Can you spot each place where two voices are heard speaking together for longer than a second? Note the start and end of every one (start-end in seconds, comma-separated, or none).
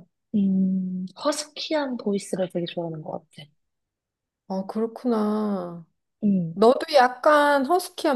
none